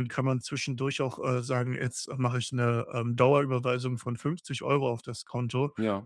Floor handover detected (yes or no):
no